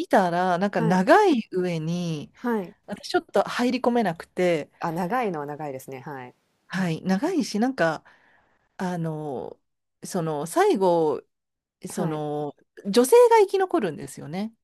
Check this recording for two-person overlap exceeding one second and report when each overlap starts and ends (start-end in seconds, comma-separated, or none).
none